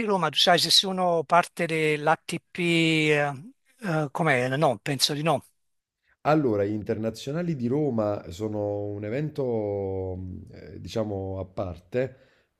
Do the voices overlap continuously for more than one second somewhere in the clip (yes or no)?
no